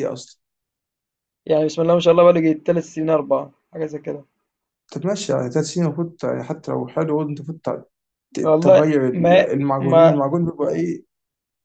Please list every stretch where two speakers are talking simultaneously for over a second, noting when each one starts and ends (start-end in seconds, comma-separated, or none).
8.4-10.2